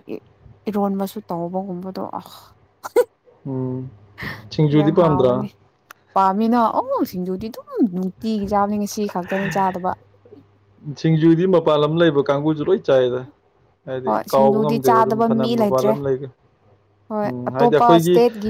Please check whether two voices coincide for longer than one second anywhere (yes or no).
yes